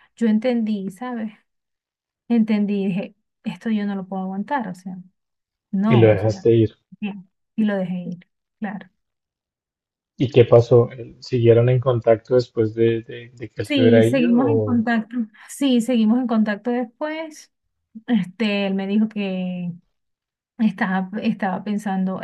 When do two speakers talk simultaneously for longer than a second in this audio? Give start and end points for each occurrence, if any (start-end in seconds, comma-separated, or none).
13.6-14.8